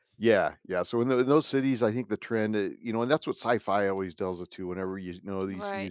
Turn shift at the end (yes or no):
no